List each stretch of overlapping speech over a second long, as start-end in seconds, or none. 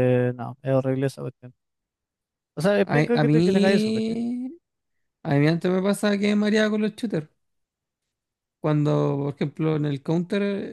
2.8-4.2